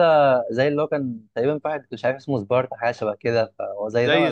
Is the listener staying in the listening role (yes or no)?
no